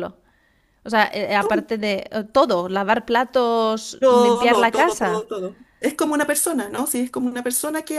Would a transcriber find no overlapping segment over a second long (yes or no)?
no